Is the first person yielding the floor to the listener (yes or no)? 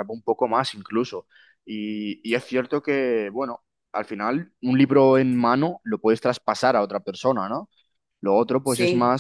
no